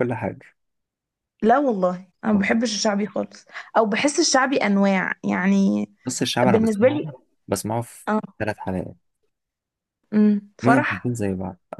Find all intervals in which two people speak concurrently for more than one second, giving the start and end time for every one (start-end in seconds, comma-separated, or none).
none